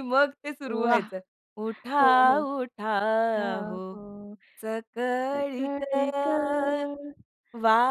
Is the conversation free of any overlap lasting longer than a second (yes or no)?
yes